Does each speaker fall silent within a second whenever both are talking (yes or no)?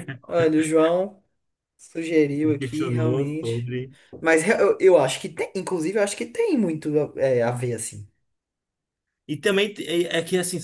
no